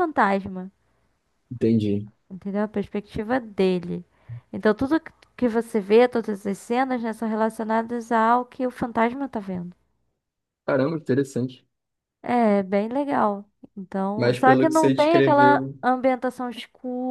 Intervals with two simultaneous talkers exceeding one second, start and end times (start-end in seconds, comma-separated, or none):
14.1-15.8